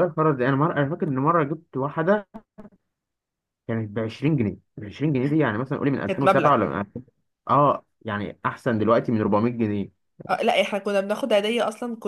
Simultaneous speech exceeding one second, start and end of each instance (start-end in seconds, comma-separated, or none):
none